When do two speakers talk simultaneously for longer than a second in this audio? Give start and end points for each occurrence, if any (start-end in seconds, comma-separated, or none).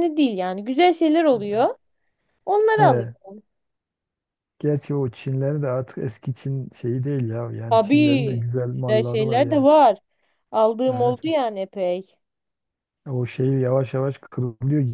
7.7-9.7